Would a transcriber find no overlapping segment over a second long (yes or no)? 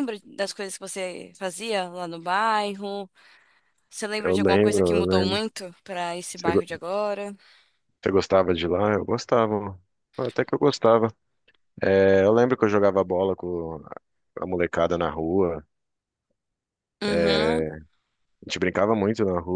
no